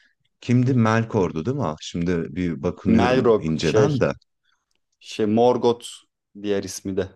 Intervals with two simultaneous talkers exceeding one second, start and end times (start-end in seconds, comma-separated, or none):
2.9-4.1